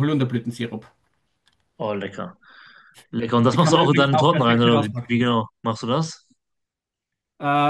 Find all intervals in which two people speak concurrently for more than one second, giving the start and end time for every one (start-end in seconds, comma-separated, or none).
3.5-5.3